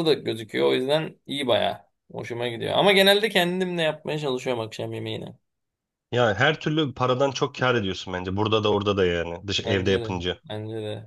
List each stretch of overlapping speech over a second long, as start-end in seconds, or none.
none